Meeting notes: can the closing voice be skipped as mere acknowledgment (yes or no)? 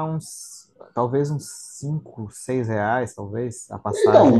no